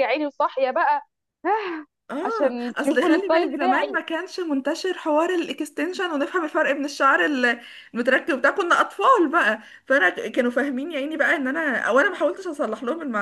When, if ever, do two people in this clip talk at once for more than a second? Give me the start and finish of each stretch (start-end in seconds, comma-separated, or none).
2.2-4.0